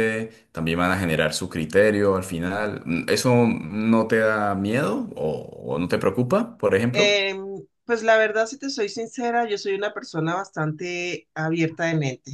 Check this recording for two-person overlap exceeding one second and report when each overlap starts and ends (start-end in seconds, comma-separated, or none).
none